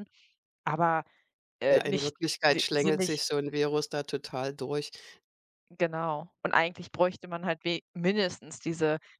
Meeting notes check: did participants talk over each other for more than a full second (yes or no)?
yes